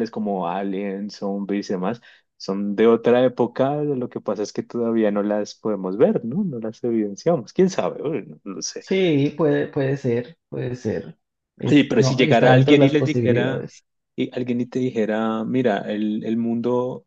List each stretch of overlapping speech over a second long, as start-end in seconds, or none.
11.7-13.7